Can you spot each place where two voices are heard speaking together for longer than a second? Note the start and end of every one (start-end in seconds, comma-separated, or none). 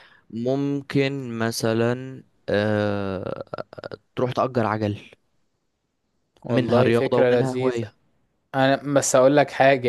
6.5-7.8